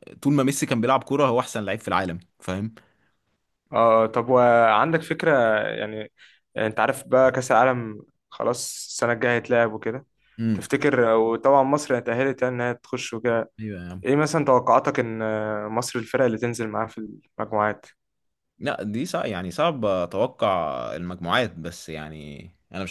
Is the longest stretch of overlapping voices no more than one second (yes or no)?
yes